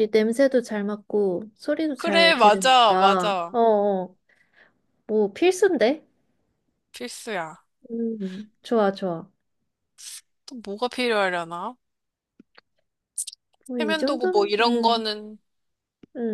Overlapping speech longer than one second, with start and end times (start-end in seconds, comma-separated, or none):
1.9-3.6, 13.8-15.1